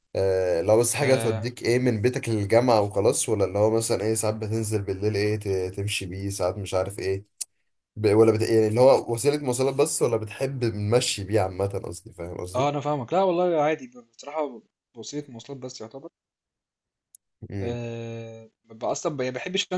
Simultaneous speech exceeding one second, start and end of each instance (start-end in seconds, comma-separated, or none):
none